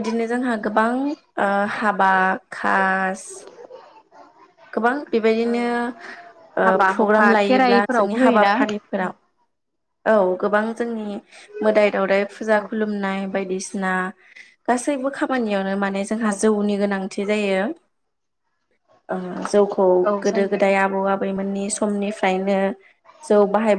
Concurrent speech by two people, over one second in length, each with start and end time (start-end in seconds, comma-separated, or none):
6.6-8.5